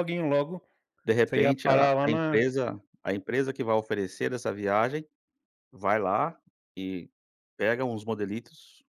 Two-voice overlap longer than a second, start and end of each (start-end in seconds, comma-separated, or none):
1.2-2.4